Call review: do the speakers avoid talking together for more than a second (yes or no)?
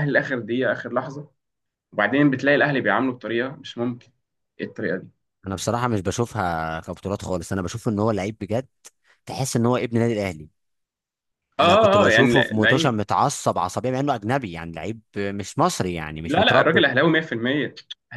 no